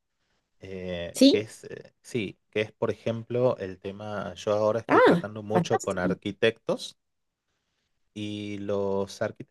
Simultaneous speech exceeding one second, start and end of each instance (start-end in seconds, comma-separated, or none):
4.9-6.2